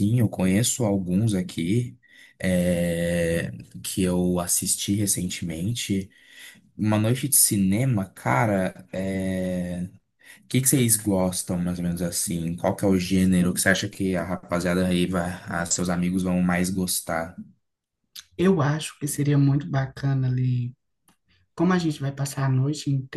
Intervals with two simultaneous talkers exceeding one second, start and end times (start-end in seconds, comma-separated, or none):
none